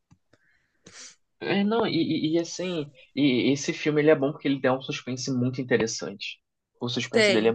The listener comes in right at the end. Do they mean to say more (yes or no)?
no